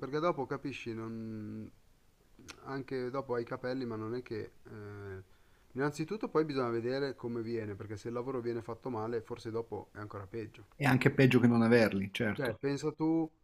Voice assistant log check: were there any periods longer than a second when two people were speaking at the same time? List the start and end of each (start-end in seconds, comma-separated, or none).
none